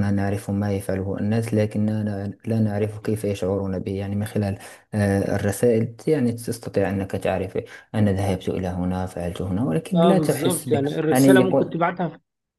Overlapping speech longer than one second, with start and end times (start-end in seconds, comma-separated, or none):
9.9-11.8